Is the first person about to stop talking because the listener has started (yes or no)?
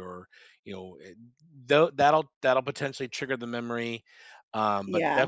no